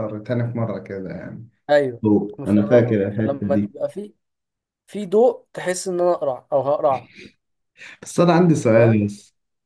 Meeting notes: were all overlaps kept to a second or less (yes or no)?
no